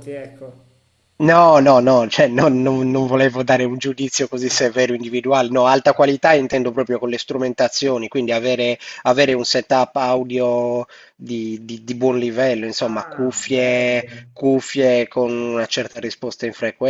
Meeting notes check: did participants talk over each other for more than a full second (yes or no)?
yes